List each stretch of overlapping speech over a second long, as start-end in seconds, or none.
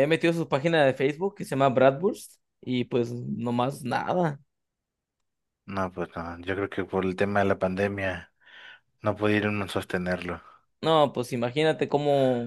none